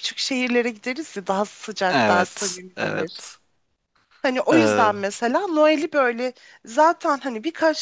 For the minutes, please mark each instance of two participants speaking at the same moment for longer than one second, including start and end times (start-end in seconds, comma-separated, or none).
1.9-3.2